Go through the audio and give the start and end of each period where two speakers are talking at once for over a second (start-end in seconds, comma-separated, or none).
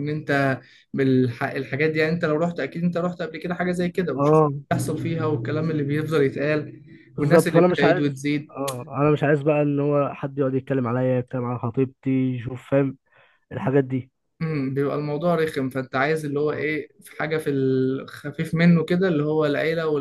7.2-8.5